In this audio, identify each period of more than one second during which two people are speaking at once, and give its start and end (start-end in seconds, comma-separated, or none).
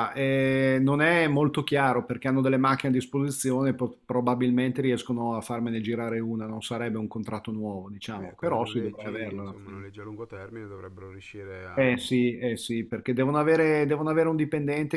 8.2-9.8